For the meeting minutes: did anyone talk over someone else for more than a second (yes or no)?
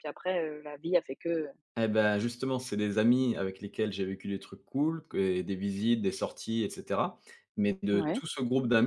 no